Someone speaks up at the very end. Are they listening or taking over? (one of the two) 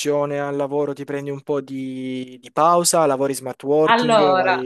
taking over